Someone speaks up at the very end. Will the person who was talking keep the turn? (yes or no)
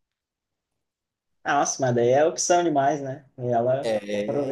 no